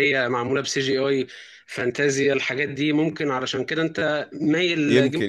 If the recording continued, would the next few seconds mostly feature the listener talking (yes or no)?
yes